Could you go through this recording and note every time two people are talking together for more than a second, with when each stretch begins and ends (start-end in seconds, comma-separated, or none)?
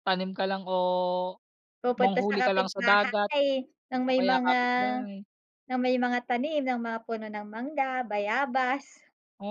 1.9-3.3